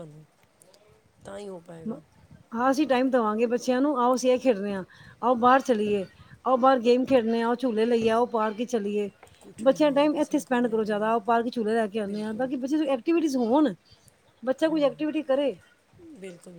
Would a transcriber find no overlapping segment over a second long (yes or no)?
no